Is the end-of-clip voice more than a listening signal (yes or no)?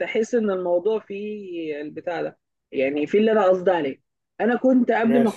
no